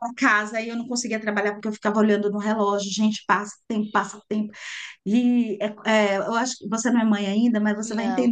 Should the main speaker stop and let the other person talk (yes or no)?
no